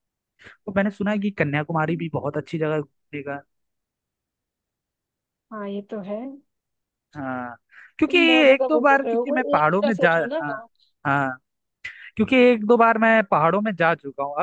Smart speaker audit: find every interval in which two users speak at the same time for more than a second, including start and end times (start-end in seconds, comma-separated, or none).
8.1-10.4